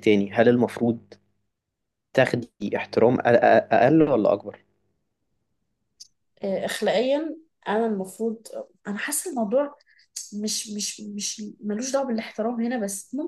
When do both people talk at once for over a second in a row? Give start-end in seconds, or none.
none